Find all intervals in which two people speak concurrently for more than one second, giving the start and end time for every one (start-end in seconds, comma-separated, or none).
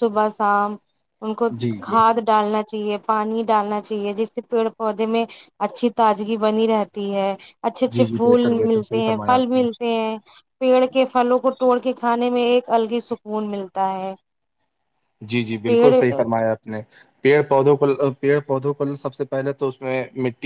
7.9-9.6